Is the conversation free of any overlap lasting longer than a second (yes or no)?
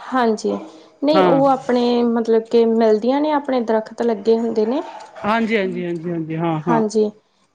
yes